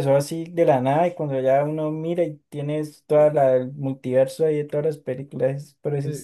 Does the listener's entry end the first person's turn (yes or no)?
yes